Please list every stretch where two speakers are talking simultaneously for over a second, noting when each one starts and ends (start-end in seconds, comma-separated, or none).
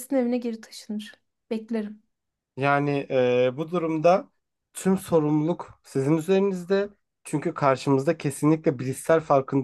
none